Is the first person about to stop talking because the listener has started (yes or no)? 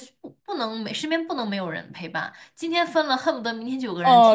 yes